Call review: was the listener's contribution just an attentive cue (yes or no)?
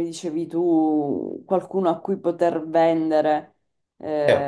no